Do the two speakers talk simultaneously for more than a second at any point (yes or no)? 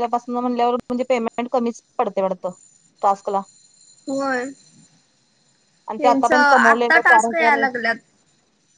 yes